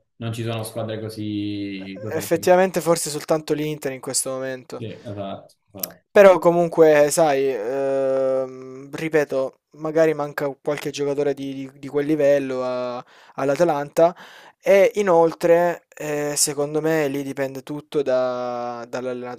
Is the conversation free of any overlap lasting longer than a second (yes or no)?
yes